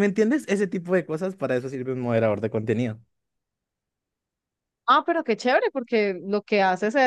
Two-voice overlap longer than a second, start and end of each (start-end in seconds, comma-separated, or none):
none